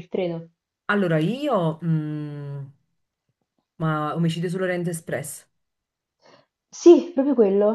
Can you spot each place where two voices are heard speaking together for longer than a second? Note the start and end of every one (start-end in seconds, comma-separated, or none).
none